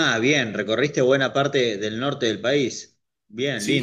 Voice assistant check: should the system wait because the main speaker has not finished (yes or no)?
no